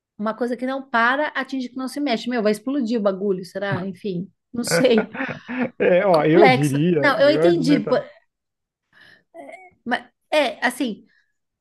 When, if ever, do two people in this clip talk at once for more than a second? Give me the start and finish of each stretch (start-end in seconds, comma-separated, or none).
6.0-7.9